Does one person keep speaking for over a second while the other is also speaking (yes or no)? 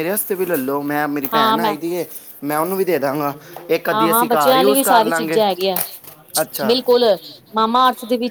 yes